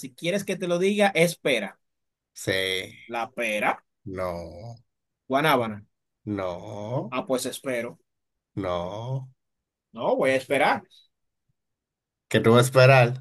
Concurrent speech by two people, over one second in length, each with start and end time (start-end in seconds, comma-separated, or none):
none